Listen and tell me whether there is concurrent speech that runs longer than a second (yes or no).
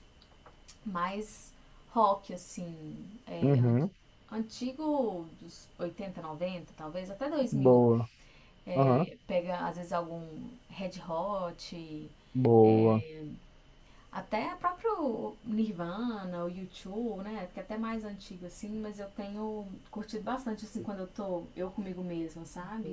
no